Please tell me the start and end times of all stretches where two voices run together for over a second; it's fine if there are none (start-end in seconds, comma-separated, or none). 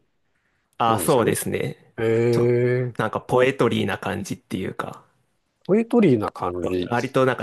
none